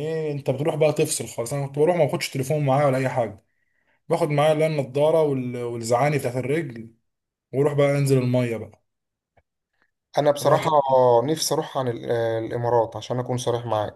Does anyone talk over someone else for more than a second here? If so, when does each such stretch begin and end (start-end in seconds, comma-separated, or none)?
none